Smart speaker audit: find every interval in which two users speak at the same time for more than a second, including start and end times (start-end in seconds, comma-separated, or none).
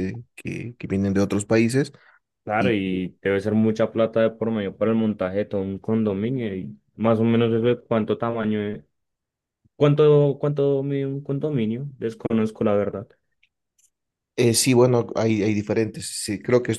none